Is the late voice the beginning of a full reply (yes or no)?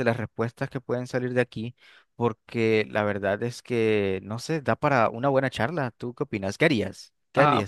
yes